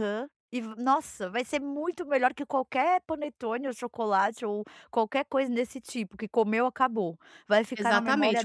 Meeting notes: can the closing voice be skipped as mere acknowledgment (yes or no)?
no